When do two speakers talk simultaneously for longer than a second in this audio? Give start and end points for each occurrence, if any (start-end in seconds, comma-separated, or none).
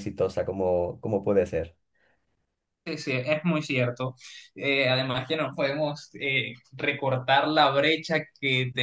none